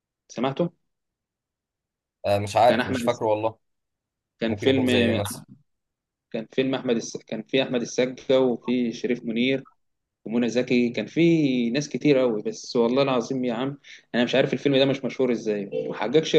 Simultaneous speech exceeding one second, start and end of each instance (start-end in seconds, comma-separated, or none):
none